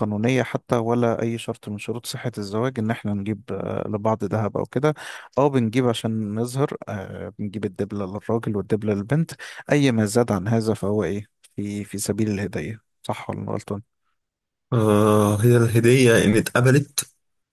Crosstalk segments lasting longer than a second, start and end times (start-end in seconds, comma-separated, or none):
none